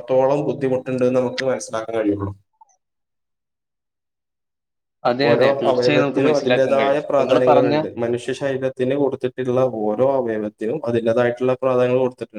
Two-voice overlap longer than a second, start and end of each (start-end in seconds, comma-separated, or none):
5.3-7.7